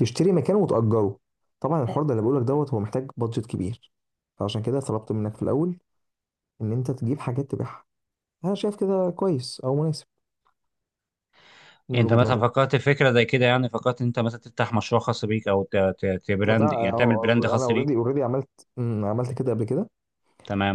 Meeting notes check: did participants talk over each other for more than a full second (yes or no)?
yes